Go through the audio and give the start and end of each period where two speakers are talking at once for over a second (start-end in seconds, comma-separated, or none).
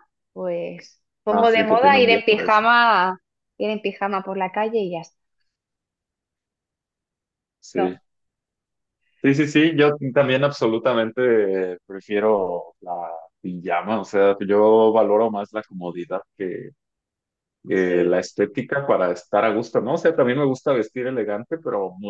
1.3-2.6